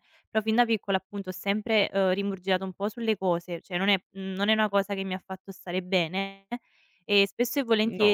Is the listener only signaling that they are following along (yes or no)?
yes